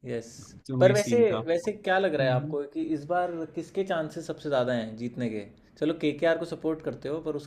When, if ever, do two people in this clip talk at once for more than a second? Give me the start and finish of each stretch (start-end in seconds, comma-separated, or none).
0.8-2.5